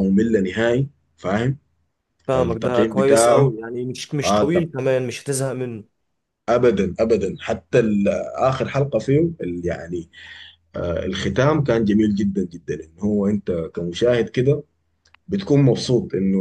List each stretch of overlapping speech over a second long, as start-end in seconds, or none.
2.4-3.5